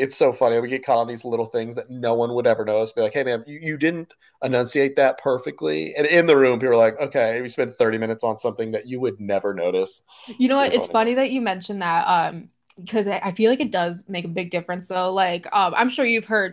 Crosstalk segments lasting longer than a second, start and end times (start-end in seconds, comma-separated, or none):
none